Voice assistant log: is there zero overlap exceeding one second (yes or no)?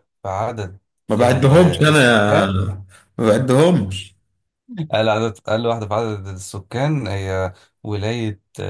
no